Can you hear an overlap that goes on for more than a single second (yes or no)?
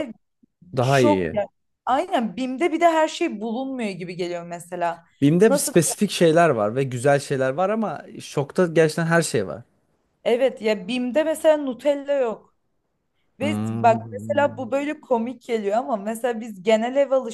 yes